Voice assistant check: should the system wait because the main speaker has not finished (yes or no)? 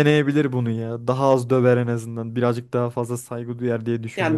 no